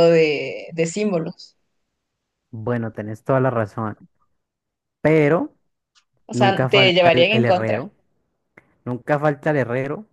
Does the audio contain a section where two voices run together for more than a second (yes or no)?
yes